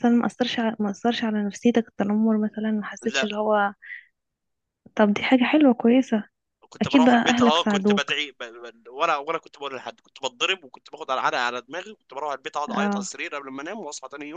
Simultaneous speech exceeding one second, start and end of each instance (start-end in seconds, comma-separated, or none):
6.8-8.1